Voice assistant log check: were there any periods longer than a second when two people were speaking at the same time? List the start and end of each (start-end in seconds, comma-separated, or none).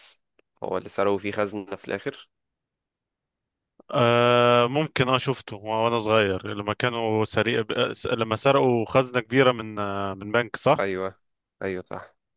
none